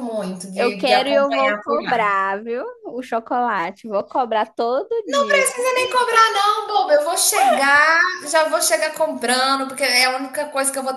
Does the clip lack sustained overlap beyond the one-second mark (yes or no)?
no